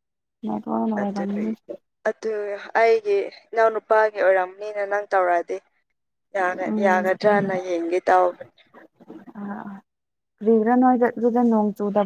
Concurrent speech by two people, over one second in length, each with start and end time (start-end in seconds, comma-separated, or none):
none